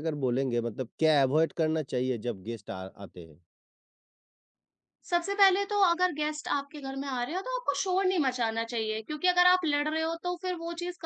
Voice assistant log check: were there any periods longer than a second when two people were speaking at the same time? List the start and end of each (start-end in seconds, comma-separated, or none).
none